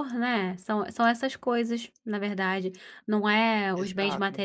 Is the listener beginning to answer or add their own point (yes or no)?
no